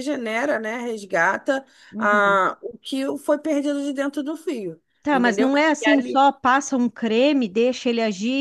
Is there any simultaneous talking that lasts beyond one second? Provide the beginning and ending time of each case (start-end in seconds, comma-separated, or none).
none